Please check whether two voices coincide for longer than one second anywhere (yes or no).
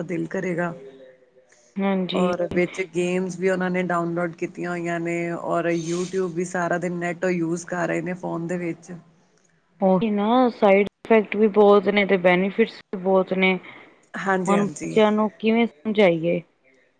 no